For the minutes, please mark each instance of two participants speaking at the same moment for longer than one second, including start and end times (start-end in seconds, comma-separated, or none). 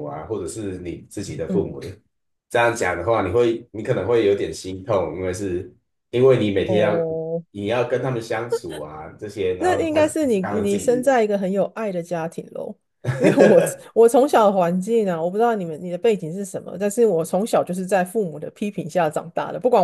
9.6-11.2